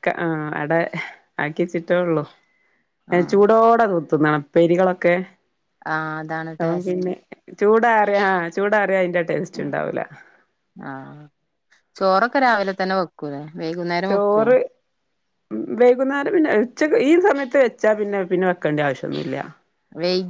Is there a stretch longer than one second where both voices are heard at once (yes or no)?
no